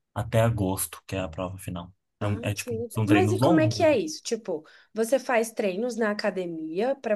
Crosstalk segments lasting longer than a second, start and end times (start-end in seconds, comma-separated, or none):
2.2-3.9